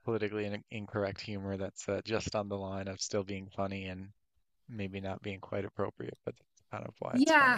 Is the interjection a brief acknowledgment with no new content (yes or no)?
no